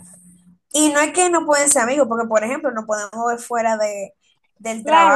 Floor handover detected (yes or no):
yes